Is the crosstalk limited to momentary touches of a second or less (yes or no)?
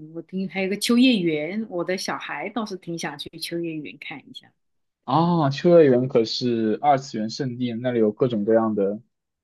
yes